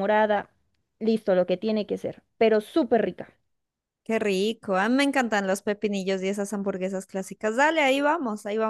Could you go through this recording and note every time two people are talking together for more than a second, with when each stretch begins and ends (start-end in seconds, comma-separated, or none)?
none